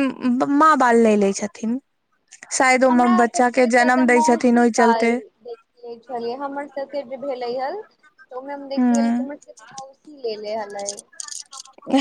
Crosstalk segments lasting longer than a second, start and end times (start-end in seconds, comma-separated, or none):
2.9-5.1